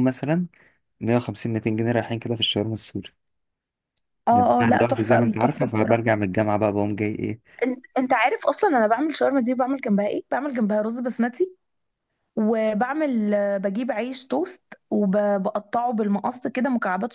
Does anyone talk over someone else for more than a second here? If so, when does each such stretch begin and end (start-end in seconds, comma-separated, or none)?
4.3-6.2